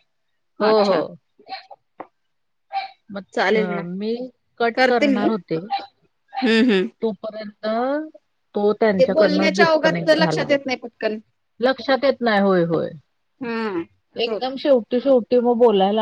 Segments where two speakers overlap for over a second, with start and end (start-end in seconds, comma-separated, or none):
9.0-10.5